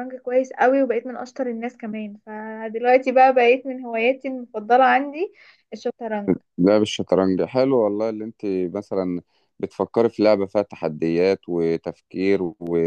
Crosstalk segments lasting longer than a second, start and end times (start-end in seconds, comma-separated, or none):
none